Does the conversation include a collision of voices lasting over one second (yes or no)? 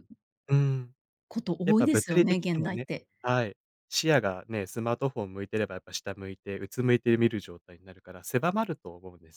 yes